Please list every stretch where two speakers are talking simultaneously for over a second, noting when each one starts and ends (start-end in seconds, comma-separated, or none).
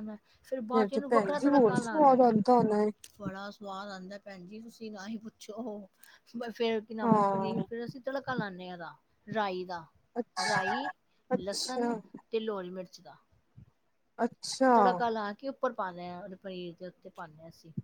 0.7-2.1